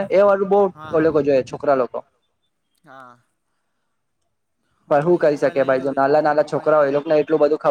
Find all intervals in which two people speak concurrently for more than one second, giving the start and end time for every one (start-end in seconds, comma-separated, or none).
4.9-7.1